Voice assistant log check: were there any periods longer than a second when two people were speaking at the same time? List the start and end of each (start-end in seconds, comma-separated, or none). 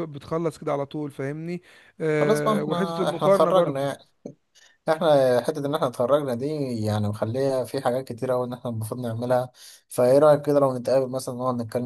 2.2-3.9